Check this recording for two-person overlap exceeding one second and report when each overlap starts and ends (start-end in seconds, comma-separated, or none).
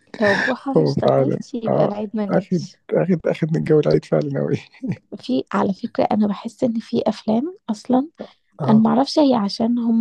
0.8-2.8